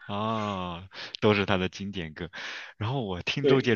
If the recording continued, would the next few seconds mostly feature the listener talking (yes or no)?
no